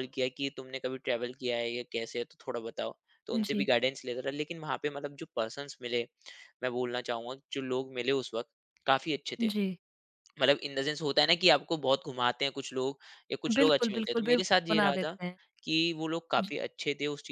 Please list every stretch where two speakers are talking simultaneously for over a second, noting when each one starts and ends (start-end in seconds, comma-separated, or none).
13.6-15.2